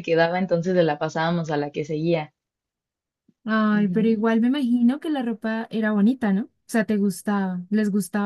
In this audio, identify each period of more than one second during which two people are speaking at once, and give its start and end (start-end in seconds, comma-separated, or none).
none